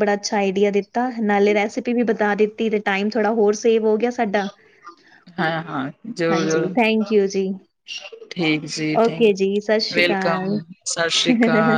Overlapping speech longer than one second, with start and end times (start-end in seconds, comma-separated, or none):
9.1-10.6